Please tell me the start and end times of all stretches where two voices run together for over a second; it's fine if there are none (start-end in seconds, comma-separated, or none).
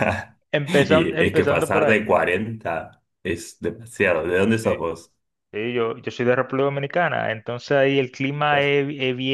0.7-2.0